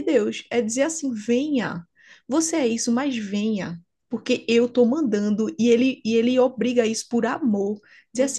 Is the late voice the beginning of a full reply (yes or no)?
no